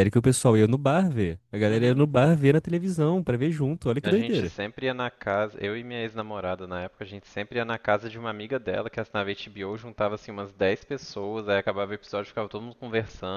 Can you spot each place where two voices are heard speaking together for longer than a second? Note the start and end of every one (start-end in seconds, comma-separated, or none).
none